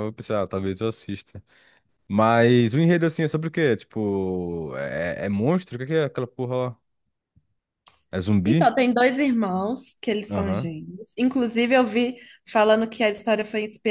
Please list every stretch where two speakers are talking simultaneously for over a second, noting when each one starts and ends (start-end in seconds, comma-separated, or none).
none